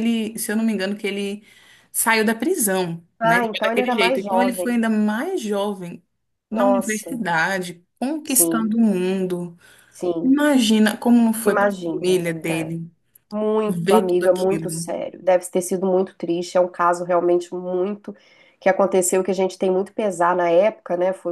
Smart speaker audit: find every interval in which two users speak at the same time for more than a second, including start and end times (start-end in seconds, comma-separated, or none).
3.2-4.8, 11.4-12.7, 13.7-14.9